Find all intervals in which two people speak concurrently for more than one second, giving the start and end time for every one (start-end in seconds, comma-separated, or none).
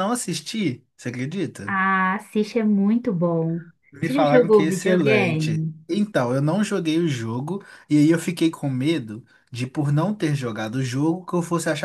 4.0-5.7